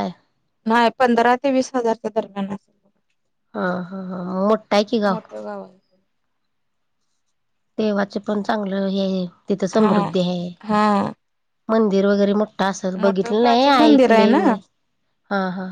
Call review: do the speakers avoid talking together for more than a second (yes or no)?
no